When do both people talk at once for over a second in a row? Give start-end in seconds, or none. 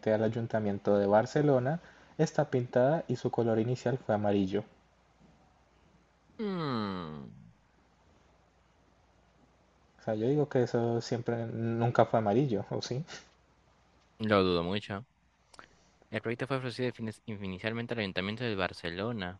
none